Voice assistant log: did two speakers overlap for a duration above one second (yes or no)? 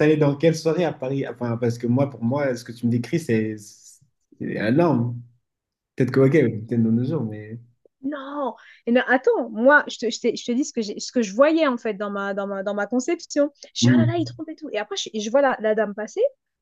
no